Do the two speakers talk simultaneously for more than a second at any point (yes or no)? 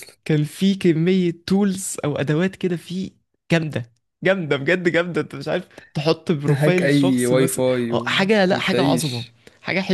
yes